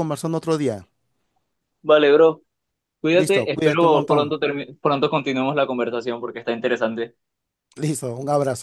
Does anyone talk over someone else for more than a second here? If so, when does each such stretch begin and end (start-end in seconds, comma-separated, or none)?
3.1-4.3